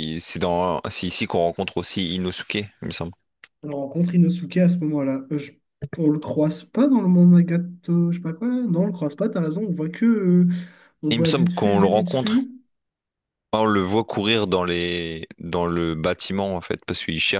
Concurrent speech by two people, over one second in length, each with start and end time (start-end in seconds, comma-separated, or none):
11.1-12.5